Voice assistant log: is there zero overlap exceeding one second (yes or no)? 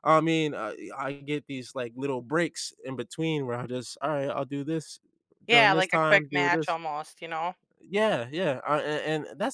no